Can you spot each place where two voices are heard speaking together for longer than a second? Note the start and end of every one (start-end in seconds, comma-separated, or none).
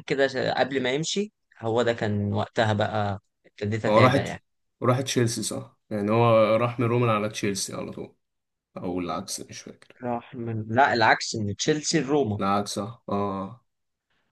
none